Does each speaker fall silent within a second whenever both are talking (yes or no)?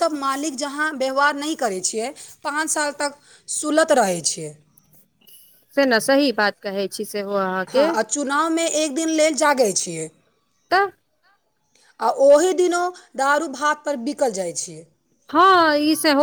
yes